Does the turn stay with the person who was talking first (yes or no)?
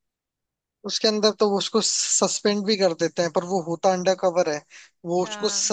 yes